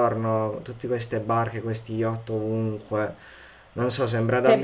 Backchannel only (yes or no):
yes